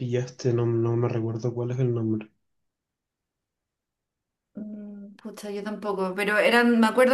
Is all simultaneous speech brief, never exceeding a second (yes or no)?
yes